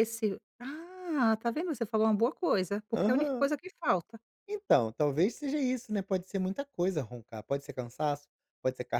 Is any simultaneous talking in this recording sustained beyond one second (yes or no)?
no